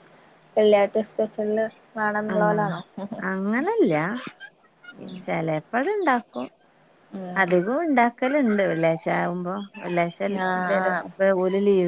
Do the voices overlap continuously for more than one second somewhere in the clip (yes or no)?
no